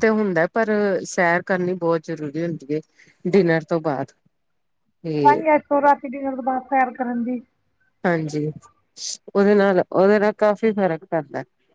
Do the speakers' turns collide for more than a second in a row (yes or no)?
no